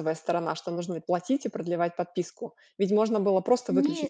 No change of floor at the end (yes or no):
yes